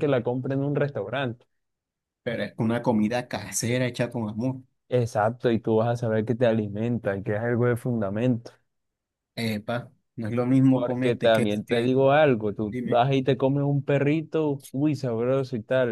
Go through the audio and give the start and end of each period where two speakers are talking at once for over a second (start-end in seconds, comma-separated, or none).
10.7-11.9